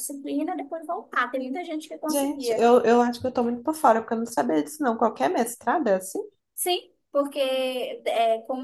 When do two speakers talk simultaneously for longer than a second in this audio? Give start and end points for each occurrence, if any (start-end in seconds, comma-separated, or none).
none